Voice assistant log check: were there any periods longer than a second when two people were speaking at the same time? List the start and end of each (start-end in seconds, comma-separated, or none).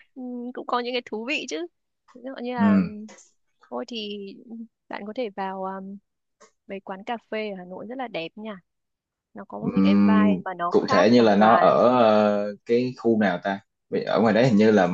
9.6-11.7